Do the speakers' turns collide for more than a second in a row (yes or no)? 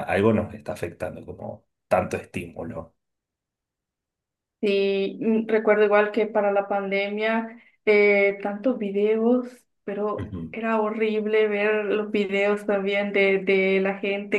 no